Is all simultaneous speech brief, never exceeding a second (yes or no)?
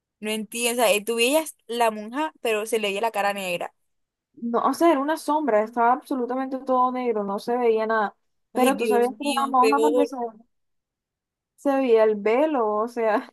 no